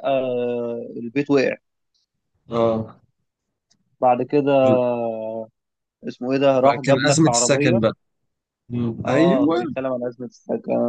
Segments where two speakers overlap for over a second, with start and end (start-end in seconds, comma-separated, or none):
6.5-7.8